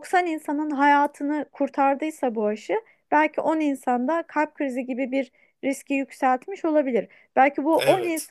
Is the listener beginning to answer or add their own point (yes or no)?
no